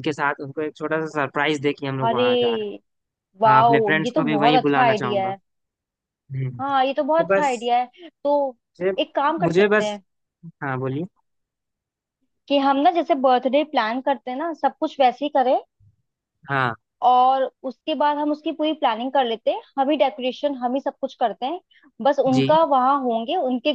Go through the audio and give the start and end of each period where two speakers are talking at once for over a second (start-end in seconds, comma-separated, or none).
3.5-5.3